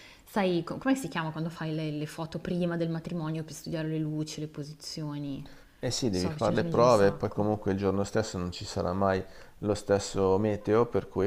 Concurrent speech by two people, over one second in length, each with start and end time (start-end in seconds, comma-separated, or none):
6.1-7.5